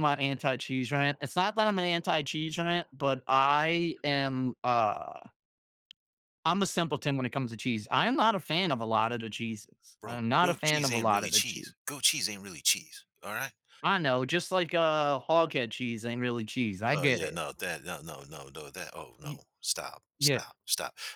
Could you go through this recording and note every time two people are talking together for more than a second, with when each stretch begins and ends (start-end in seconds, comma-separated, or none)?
10.0-11.7